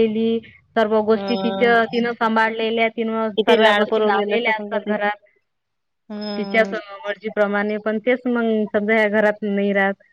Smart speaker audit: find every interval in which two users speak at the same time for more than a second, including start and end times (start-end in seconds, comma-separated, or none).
3.4-5.0